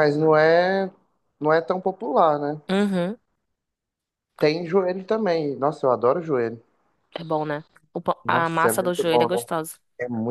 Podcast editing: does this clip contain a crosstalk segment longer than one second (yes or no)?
yes